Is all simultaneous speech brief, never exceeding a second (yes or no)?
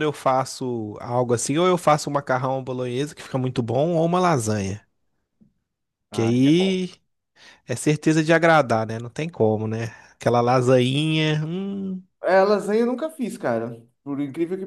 yes